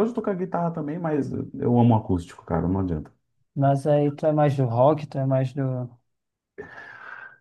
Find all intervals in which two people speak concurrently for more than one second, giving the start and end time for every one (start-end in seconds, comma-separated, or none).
none